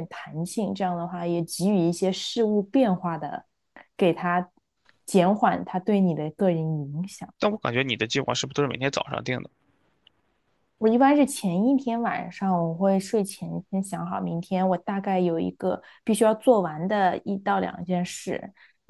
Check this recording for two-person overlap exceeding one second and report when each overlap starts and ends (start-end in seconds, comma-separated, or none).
none